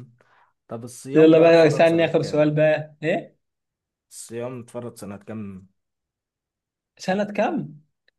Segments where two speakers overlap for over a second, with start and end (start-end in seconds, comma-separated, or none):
1.1-2.5